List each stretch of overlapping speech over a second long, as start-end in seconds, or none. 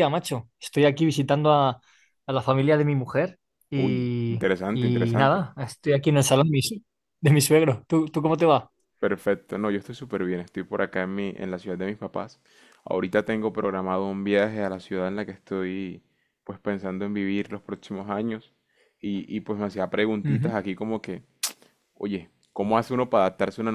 3.8-5.5